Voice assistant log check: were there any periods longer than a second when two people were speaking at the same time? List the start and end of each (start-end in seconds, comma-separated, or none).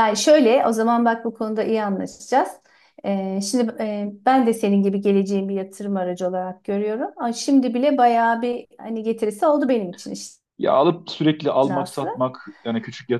none